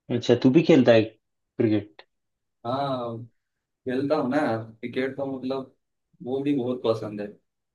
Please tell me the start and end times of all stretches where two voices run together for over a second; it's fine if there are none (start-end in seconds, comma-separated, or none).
none